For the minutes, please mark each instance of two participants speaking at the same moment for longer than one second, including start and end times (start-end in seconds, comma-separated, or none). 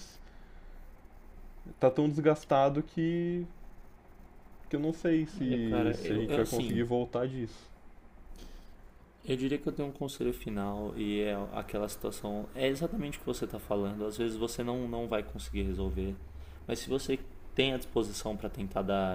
5.4-6.8